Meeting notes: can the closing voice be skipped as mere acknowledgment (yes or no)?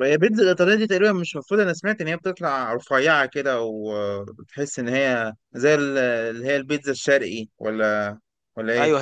no